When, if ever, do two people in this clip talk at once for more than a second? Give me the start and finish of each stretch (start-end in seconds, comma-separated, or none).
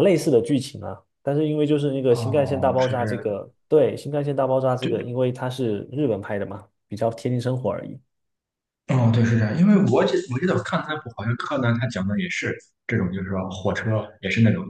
2.1-3.4